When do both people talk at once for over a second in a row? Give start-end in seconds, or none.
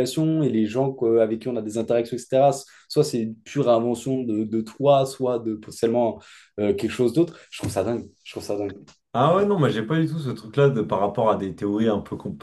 none